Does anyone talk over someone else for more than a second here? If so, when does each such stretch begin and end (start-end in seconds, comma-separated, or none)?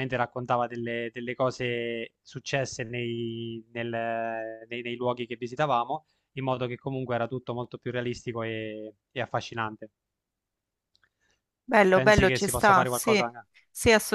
11.9-13.2